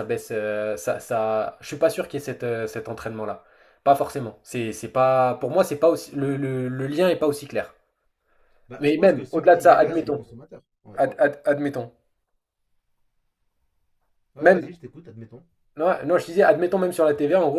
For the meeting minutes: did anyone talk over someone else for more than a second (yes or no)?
yes